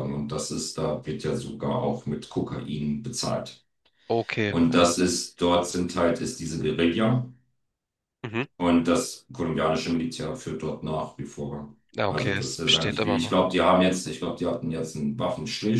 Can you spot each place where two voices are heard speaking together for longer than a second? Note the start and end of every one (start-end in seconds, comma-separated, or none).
11.9-13.5